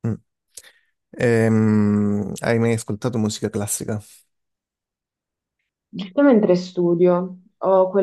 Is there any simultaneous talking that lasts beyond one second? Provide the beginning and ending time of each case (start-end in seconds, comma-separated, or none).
none